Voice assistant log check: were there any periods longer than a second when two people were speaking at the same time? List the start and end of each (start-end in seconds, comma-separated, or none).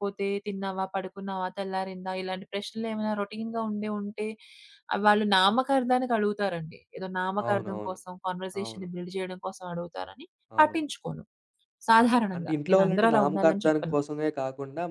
12.0-13.9